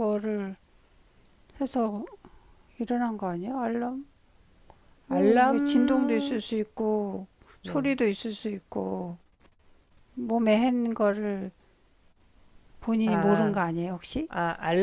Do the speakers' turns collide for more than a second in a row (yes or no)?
no